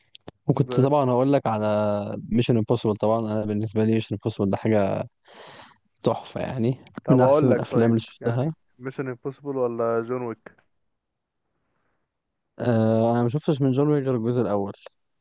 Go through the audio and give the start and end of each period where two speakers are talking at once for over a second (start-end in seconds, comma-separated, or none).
7.0-8.5